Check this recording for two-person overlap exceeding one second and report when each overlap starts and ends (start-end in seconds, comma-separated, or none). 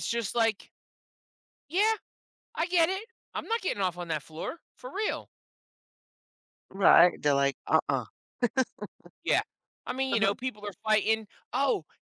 none